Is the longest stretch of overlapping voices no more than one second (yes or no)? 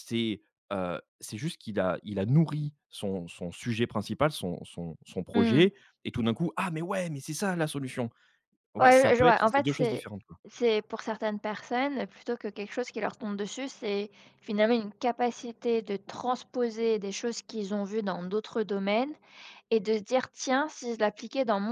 no